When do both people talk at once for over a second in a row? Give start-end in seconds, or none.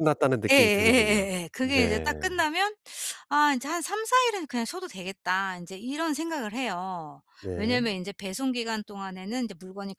0.5-2.1